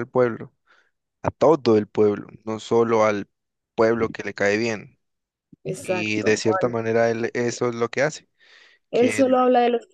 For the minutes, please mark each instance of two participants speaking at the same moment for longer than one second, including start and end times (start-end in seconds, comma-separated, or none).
none